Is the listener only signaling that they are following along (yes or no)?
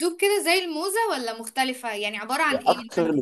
no